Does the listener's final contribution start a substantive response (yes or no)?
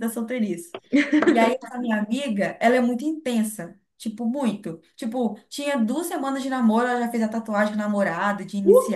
yes